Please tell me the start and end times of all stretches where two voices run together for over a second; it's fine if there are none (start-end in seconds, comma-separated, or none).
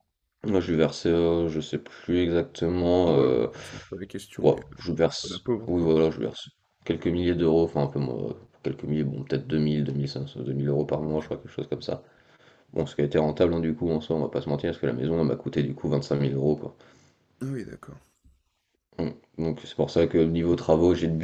4.4-5.9